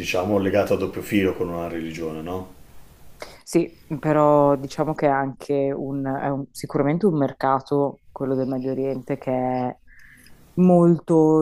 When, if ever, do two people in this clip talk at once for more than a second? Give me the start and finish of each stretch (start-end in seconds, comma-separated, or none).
none